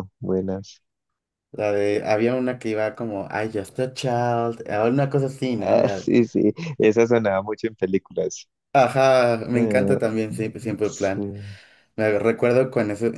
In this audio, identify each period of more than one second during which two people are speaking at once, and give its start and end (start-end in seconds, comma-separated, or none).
none